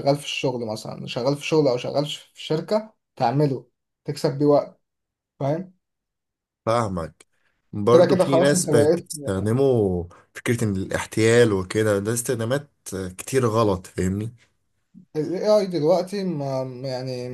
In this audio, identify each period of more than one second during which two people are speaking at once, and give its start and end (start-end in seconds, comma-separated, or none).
7.9-9.1